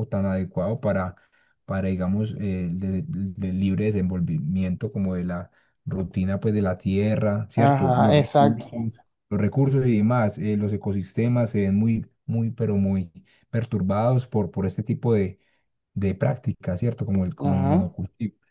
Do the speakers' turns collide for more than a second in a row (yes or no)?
yes